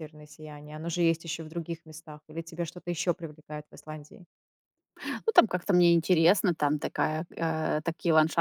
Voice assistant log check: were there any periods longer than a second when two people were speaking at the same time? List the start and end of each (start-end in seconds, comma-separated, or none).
none